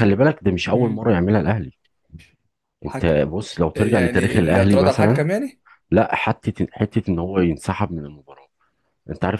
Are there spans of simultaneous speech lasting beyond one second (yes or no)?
yes